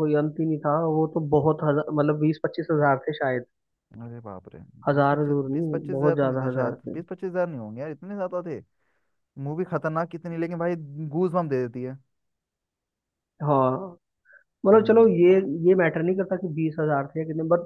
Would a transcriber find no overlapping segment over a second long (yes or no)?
no